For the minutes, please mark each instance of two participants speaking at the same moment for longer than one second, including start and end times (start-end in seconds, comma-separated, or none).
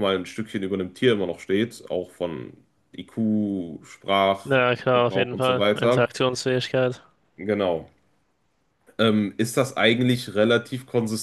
4.4-6.1